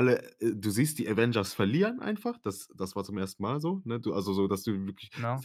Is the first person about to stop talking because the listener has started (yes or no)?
no